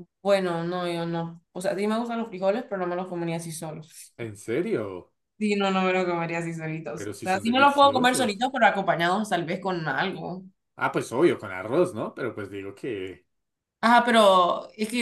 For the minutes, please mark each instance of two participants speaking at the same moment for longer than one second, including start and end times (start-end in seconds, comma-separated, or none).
7.0-8.4